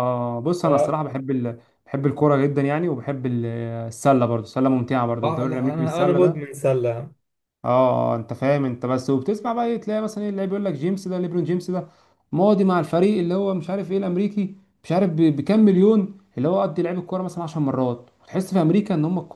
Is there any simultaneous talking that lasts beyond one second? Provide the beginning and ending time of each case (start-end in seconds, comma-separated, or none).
5.2-6.5